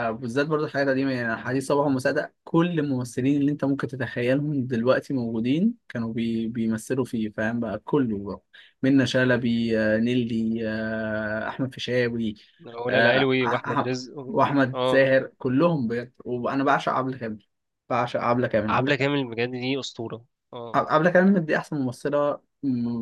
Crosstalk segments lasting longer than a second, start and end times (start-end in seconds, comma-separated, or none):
12.9-15.1